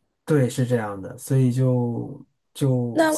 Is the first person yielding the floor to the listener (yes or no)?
no